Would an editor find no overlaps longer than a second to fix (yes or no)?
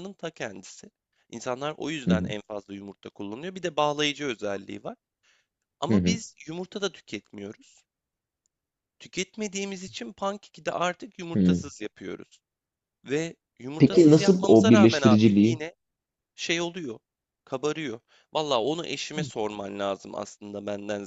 no